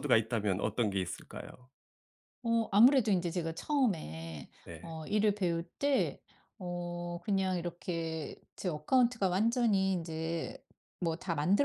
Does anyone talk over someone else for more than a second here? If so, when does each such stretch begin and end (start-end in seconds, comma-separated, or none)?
none